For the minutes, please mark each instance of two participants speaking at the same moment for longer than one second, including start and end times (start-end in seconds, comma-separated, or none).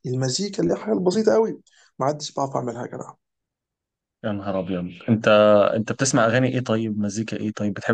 none